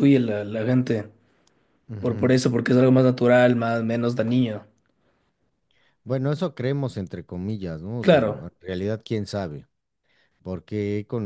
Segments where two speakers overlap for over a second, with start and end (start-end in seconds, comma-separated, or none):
none